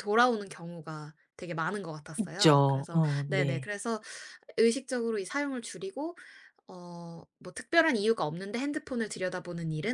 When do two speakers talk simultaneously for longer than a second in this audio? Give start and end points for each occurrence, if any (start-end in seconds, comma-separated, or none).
2.2-3.7